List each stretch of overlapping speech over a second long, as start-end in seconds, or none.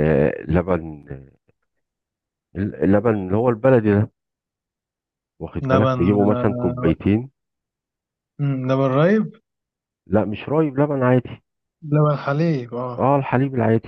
5.6-6.9